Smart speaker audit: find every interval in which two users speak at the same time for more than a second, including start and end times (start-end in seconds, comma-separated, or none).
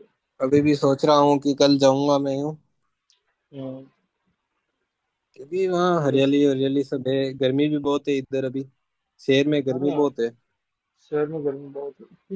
none